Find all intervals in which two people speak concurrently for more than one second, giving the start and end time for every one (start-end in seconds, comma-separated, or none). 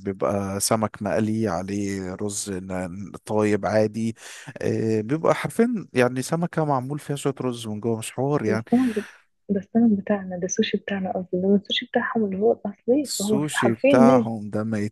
13.1-14.3